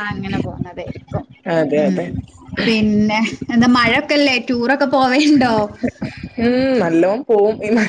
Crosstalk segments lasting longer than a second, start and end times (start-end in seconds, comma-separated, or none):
none